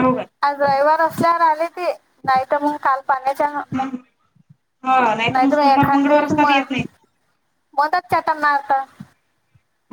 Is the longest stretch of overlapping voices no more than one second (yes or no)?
no